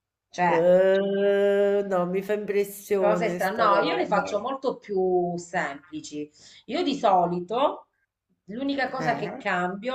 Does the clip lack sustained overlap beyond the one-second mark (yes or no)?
no